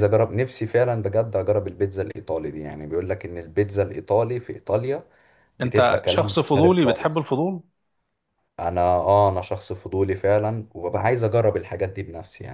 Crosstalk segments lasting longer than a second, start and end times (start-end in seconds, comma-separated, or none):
5.6-7.3